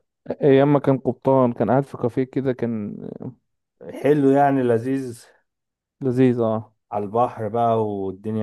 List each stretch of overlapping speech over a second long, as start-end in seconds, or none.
none